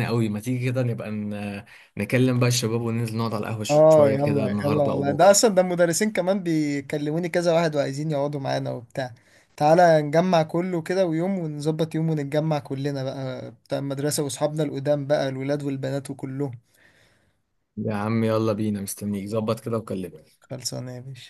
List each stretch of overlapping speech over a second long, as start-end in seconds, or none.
3.7-5.4